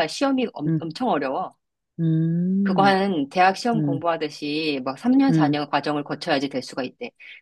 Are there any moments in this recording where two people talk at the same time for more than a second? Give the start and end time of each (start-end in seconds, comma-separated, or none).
none